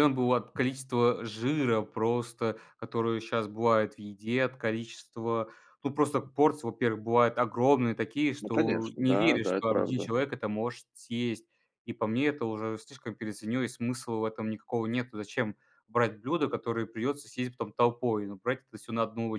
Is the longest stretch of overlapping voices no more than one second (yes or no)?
no